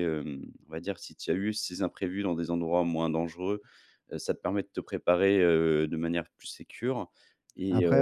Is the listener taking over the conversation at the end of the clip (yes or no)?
yes